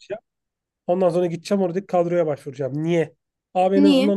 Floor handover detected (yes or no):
no